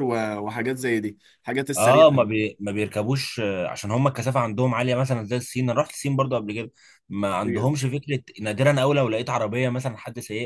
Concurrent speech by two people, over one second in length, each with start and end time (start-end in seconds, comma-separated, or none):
none